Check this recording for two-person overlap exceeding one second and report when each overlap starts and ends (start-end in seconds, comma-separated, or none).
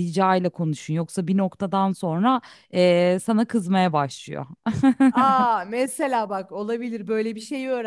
none